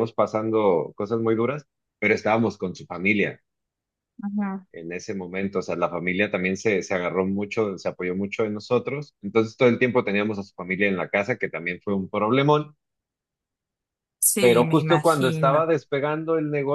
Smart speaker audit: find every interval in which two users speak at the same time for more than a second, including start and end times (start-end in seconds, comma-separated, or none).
14.4-15.7